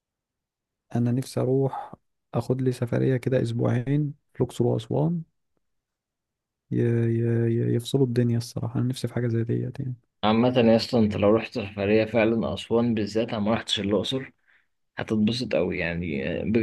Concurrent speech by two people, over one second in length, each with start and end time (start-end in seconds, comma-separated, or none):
none